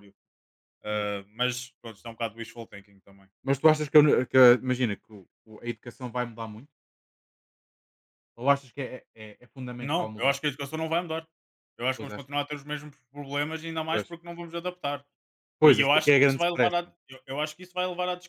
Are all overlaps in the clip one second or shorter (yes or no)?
no